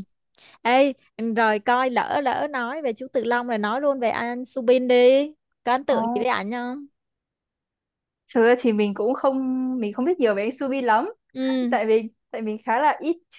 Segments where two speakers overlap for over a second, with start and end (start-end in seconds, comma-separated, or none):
none